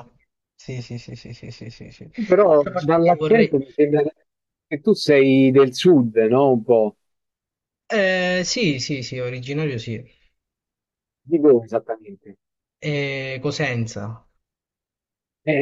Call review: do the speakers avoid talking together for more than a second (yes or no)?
no